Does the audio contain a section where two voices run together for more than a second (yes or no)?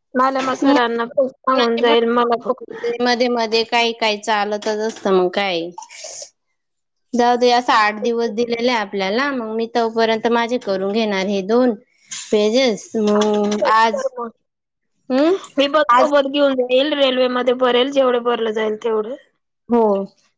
yes